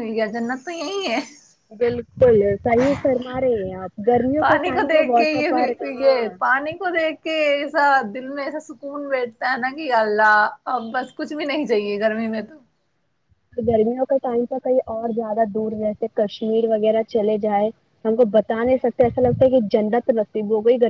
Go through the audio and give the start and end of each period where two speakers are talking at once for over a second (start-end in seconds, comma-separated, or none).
4.4-6.3